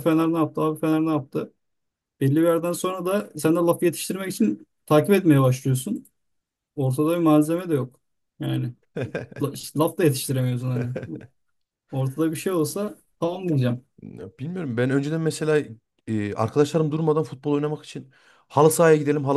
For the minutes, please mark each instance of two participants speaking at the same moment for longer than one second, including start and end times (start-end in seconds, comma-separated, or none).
none